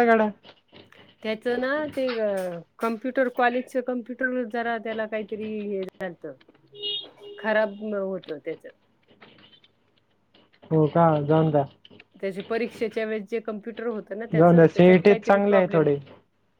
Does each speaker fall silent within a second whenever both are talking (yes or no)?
no